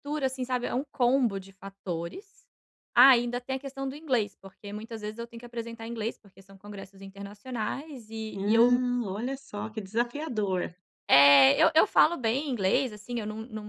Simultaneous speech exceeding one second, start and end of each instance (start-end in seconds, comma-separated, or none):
none